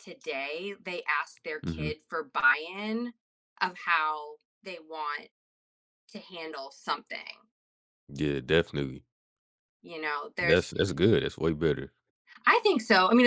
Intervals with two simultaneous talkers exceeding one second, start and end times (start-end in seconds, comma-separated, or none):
none